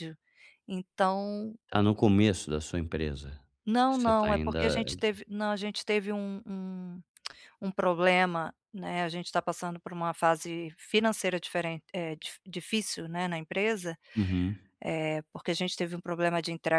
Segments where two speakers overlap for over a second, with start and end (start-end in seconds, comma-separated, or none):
3.9-5.1